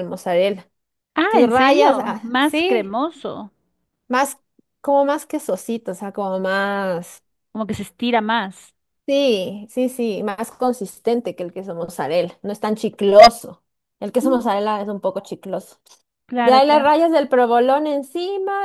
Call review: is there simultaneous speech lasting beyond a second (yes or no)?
yes